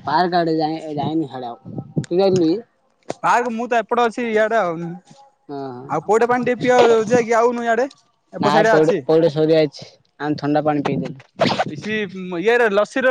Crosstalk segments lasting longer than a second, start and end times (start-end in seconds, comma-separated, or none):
none